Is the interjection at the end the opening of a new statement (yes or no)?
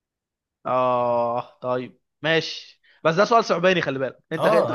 yes